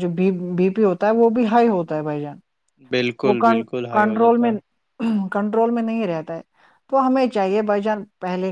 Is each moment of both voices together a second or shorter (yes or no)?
no